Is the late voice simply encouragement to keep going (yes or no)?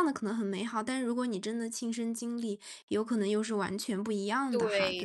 no